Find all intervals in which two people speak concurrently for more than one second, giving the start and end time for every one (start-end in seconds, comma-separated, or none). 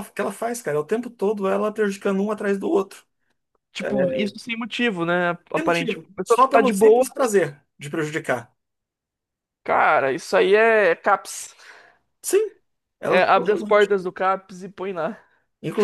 5.5-7.1